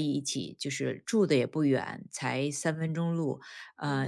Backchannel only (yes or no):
yes